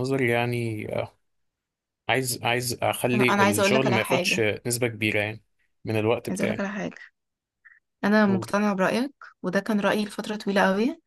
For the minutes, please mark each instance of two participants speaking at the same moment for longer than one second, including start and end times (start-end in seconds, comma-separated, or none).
3.1-4.5